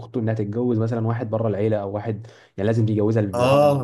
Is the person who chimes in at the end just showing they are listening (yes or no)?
no